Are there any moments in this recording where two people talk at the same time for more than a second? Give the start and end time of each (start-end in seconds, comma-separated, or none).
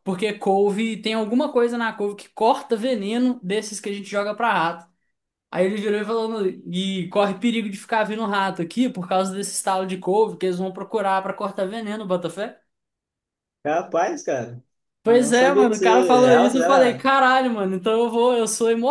15.1-17.1